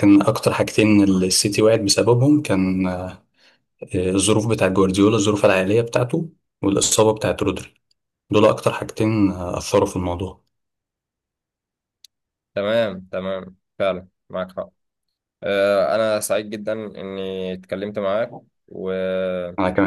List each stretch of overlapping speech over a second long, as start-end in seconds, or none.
none